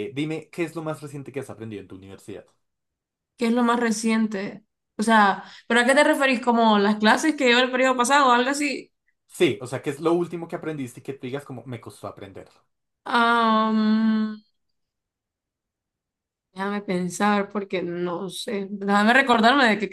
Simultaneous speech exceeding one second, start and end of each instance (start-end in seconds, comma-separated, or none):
none